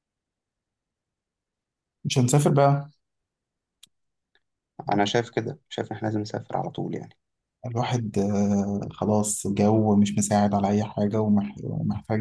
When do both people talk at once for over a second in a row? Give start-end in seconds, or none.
none